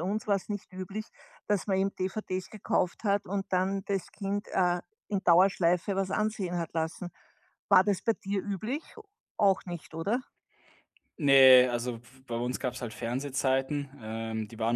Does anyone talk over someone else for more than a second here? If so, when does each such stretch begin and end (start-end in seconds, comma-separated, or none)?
none